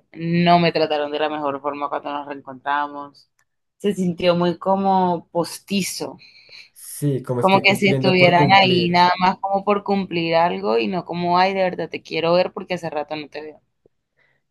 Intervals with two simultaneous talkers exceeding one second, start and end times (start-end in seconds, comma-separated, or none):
7.4-9.1